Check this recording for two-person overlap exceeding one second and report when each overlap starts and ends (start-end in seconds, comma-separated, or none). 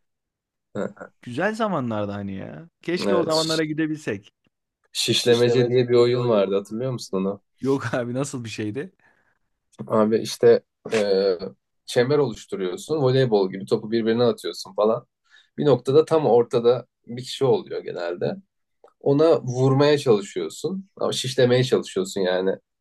5.1-6.5